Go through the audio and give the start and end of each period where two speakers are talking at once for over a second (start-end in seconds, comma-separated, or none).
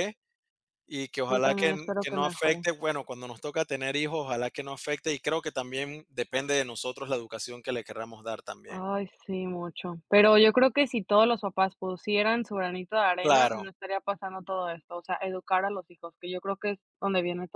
1.3-2.6